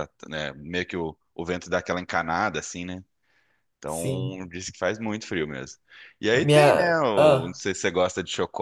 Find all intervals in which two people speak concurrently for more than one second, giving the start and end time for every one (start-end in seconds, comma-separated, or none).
6.3-7.6